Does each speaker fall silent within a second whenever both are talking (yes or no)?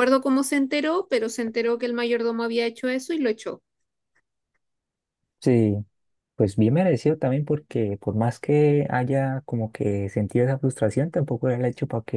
yes